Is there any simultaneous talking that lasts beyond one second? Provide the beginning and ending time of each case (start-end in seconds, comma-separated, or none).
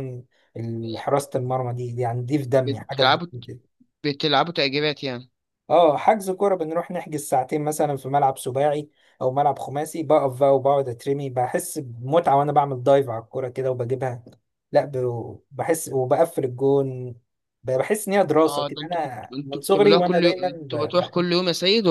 18.4-21.3